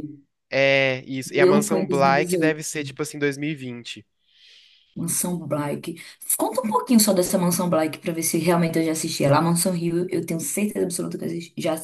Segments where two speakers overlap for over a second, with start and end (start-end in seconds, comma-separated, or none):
1.3-2.6